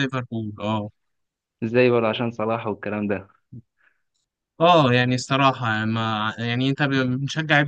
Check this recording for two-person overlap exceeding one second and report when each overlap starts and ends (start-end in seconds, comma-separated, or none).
none